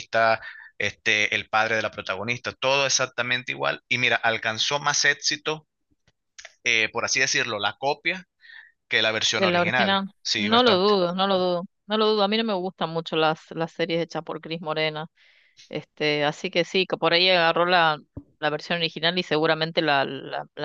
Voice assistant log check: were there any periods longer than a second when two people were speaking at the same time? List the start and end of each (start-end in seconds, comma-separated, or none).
9.3-10.9